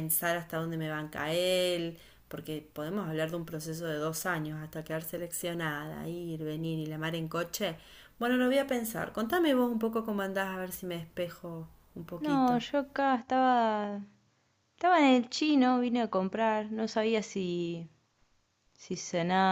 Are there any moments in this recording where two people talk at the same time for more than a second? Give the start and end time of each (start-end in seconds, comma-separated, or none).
none